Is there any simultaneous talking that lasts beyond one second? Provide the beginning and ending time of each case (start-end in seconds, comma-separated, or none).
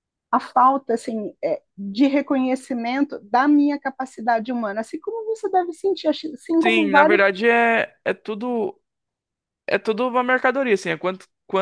none